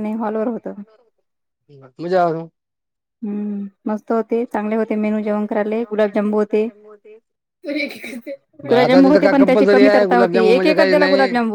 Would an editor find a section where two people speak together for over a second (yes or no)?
yes